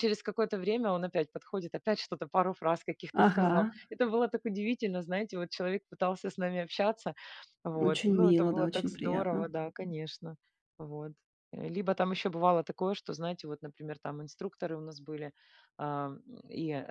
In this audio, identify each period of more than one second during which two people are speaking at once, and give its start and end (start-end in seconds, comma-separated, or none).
7.8-9.4